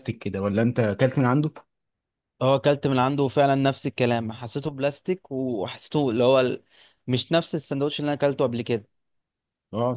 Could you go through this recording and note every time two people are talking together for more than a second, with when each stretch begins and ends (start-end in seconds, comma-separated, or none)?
none